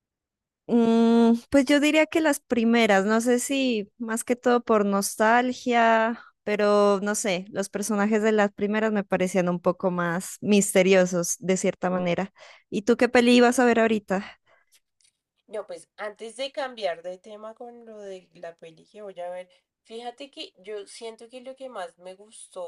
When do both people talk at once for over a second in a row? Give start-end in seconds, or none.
none